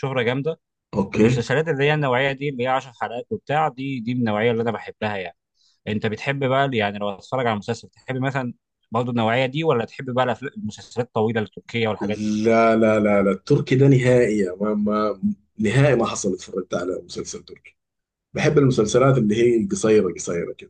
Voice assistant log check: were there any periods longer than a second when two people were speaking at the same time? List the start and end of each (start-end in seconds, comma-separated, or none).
none